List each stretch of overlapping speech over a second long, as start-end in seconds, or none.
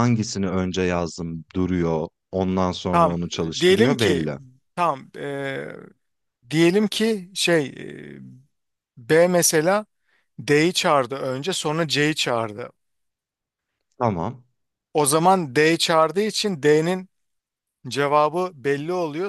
2.9-4.3